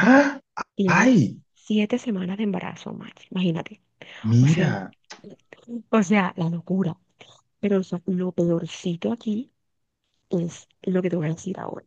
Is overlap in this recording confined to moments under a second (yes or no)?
yes